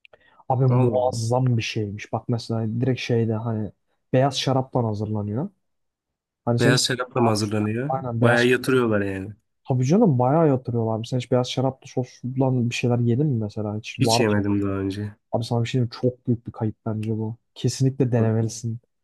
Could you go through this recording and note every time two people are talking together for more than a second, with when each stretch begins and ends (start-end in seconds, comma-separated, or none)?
6.6-8.4